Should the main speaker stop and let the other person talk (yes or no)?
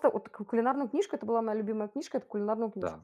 yes